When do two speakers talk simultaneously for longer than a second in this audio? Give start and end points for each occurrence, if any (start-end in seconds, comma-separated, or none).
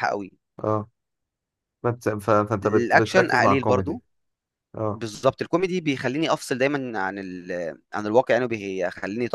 2.6-4.0